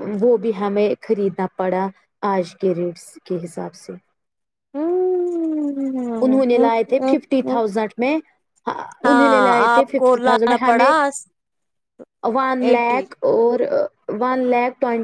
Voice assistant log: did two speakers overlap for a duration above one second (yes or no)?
yes